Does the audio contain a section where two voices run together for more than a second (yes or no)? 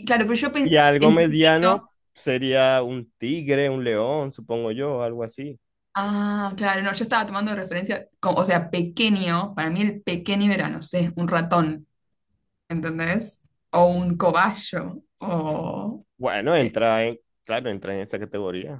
yes